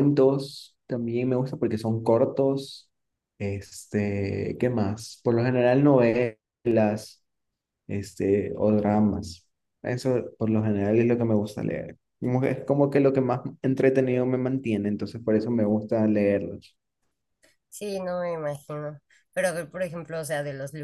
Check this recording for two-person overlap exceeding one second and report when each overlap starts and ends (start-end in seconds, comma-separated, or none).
none